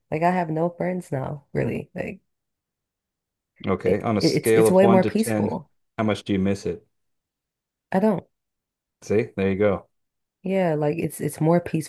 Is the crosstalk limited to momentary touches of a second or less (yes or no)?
no